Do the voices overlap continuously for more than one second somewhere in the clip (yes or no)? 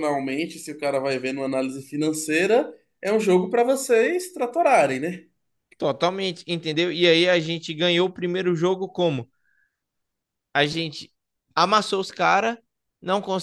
no